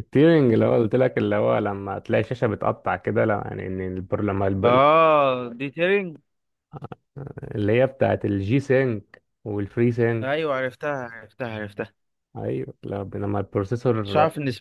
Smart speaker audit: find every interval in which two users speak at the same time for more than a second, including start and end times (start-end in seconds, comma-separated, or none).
none